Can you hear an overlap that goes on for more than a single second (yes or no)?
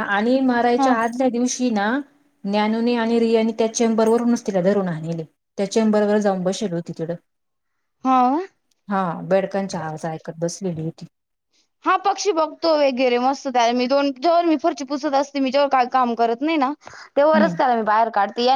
no